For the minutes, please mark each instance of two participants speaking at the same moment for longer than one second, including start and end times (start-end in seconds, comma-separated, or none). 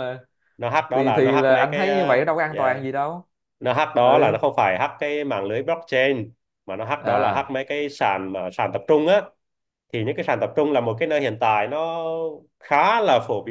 0.9-2.8